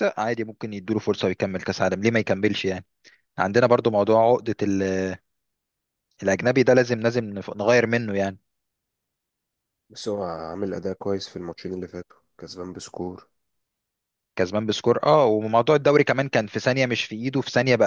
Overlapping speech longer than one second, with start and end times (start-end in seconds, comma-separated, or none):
none